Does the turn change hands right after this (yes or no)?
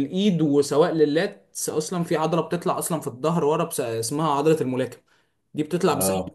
no